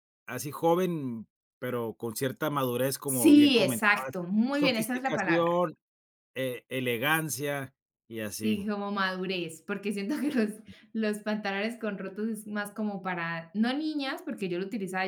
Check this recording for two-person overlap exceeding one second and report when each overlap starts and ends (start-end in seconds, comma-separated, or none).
3.0-5.6